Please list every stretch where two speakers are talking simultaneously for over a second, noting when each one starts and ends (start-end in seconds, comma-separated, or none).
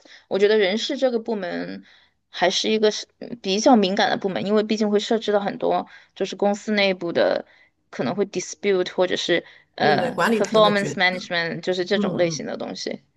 9.8-11.3